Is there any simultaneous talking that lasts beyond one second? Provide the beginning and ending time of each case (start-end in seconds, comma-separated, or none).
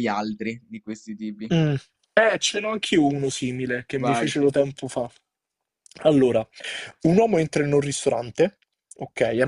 none